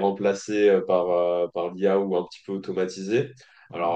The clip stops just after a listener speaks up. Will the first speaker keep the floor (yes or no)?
yes